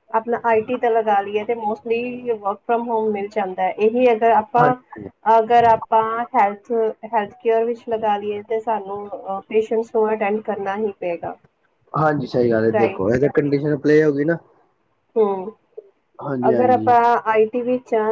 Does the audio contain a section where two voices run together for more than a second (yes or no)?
no